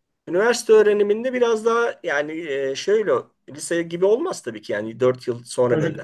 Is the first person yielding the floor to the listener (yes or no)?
yes